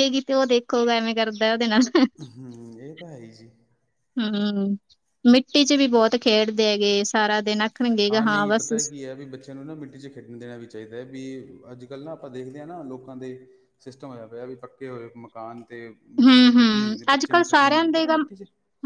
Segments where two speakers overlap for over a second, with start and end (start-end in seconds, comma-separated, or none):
16.2-18.1